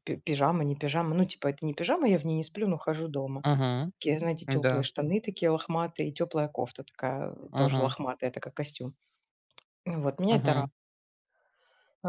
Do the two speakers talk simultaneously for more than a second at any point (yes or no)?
no